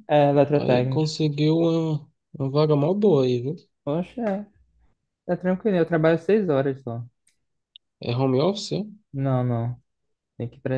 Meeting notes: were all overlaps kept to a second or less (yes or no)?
yes